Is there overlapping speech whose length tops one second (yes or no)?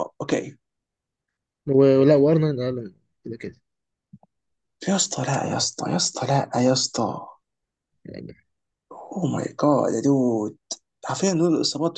no